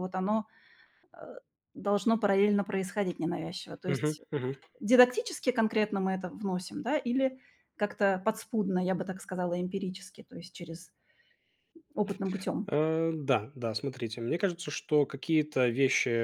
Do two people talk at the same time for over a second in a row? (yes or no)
no